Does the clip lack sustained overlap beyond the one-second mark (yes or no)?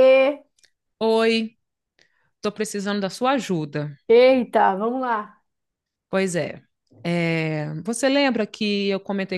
yes